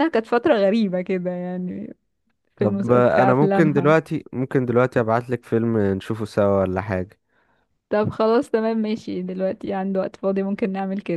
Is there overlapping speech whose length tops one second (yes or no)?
yes